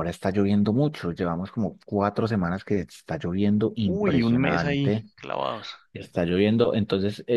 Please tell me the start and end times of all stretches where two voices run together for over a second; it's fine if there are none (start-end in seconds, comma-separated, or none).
3.9-5.0